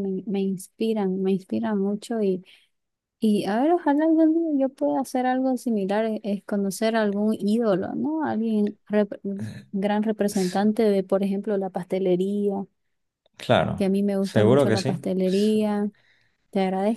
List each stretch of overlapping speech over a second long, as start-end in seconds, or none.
14.2-15.6